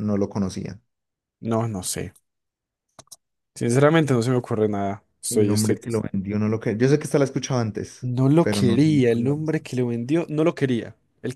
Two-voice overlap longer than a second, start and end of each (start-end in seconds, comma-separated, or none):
8.0-9.8